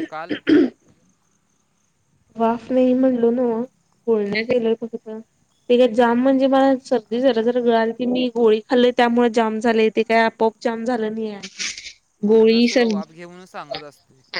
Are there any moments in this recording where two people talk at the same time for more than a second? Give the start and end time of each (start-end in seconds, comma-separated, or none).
none